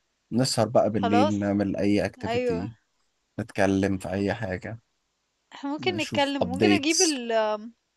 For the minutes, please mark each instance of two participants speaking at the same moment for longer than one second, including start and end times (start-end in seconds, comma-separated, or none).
5.8-7.2